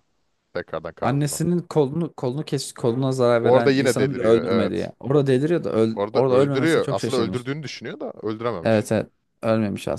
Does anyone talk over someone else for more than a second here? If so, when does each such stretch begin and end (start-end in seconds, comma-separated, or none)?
3.4-4.9, 6.0-7.5